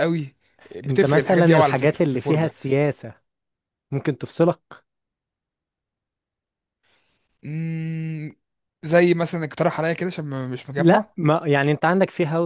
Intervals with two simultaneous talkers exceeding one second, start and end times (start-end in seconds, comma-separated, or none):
0.9-2.5